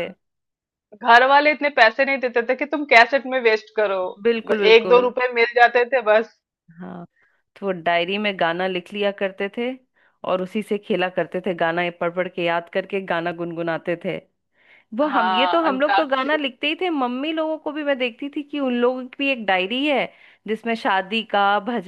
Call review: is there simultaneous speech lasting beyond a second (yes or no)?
yes